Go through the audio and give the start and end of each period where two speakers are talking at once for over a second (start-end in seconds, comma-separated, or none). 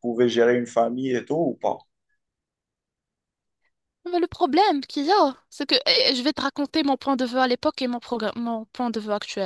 none